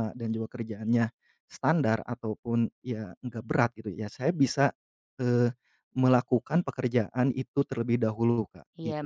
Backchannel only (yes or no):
no